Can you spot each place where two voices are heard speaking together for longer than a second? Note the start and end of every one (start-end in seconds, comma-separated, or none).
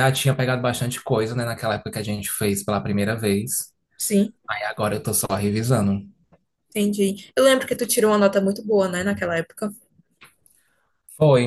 none